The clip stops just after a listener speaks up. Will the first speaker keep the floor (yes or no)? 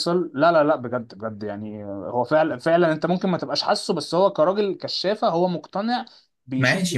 no